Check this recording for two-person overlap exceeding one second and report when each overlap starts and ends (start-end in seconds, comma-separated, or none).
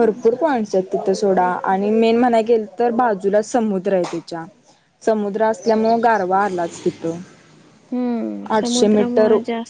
none